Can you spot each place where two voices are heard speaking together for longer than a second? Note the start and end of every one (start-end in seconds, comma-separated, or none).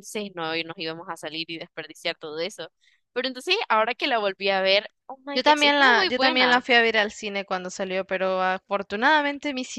5.3-6.6